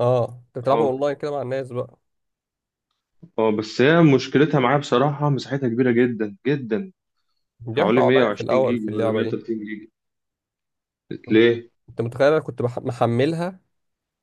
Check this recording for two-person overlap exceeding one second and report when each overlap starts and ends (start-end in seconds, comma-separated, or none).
7.7-9.4